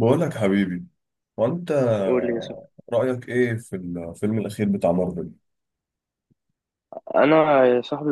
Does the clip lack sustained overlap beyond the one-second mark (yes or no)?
yes